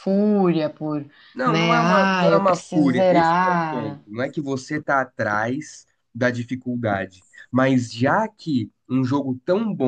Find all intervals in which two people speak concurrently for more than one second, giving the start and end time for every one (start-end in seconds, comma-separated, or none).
1.4-4.0